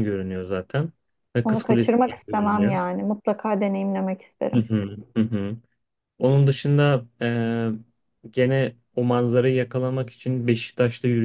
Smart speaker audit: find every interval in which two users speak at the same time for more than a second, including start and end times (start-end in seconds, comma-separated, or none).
1.4-2.8